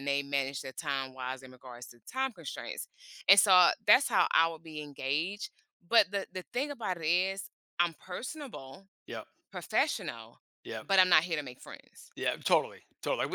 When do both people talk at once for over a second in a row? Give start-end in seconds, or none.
none